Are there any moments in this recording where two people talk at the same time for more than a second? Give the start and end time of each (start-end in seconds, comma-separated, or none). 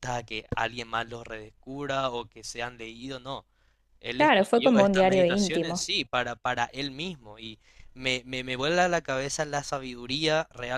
4.2-5.8